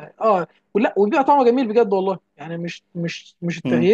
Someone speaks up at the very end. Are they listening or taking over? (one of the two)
listening